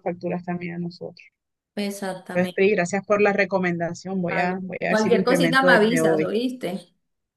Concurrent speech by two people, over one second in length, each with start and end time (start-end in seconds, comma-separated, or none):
4.3-6.3